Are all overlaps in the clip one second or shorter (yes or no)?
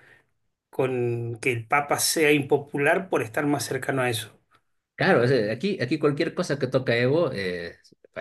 yes